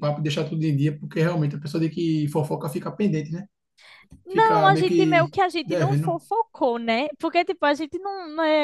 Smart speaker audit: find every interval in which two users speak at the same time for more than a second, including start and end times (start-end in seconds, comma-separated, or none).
4.3-6.2